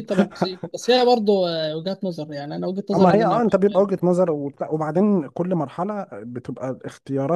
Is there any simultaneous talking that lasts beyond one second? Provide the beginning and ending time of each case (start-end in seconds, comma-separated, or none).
none